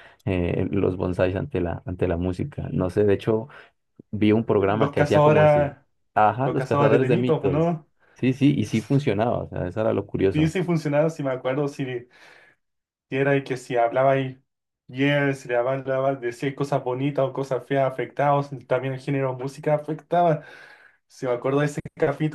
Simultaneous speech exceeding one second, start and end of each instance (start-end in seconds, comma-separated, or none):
4.5-5.7, 6.4-7.7